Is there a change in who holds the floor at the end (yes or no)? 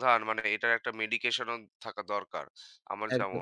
yes